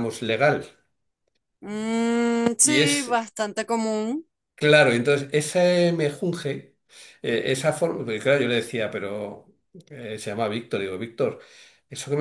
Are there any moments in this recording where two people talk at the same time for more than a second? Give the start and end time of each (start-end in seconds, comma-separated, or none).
none